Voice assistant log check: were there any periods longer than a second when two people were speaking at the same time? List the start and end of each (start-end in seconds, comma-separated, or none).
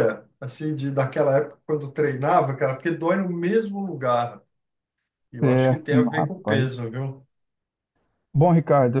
5.4-6.8